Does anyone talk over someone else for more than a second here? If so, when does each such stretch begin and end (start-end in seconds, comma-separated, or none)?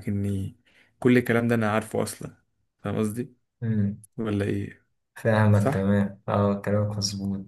none